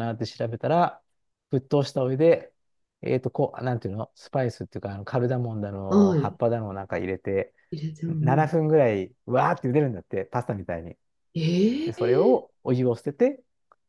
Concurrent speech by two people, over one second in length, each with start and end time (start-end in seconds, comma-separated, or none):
none